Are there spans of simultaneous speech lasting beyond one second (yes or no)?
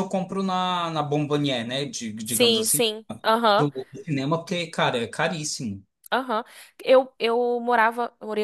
no